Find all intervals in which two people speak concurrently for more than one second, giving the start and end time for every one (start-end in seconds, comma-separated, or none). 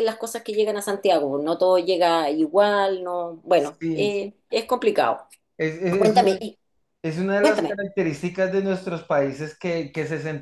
none